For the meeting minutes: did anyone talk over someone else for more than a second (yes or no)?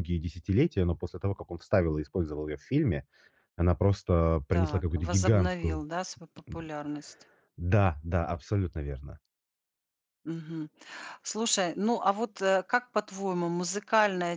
yes